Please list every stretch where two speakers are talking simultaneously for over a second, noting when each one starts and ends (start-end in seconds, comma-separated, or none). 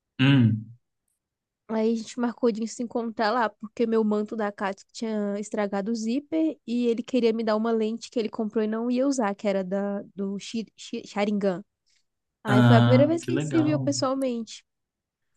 12.5-13.9